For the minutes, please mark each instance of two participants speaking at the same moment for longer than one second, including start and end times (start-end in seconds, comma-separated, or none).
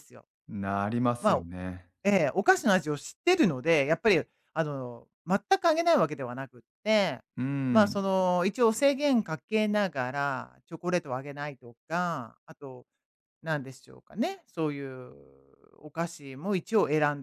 none